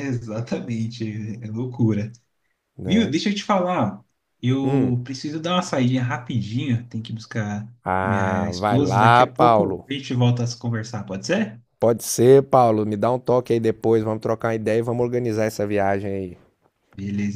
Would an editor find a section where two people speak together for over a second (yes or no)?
yes